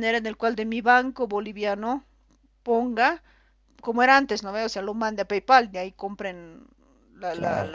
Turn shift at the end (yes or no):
no